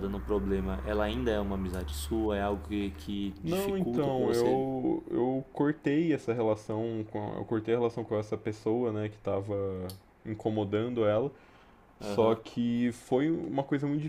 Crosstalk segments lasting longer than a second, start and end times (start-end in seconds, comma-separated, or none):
3.4-4.6